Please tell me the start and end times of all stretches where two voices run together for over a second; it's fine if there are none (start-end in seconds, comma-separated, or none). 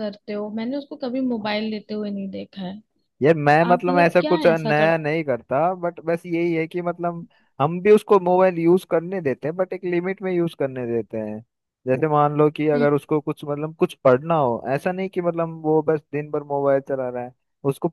3.5-5.0